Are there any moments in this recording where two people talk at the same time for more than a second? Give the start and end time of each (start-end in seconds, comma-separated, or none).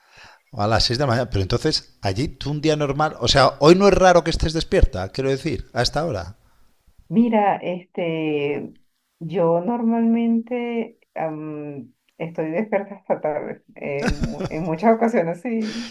none